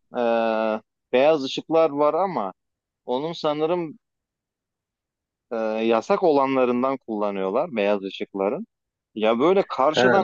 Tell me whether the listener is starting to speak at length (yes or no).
no